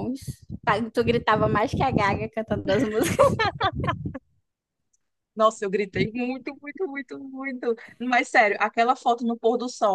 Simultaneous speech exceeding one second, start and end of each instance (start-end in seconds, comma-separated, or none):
none